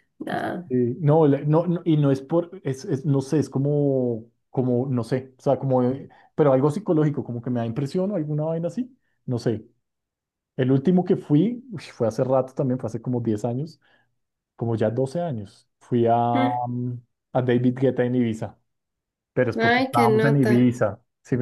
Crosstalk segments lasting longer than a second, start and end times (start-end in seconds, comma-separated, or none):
19.5-20.7